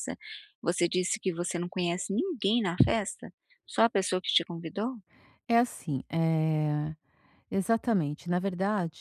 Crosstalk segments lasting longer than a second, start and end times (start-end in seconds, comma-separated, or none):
none